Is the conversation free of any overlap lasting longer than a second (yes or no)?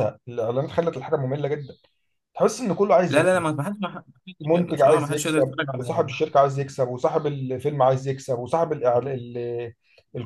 no